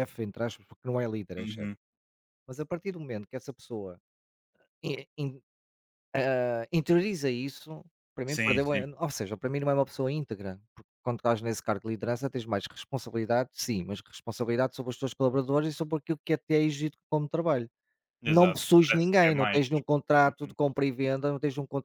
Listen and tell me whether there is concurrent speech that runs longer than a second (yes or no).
yes